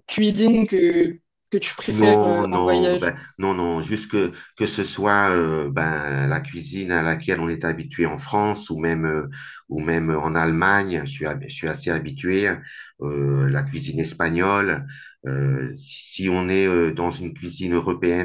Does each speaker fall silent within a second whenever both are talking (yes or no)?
no